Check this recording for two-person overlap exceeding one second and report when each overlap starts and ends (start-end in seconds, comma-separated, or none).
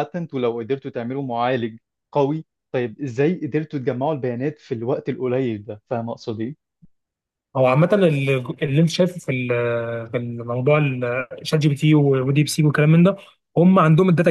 none